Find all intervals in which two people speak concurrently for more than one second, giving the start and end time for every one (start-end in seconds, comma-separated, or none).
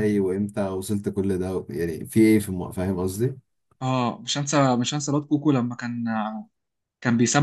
none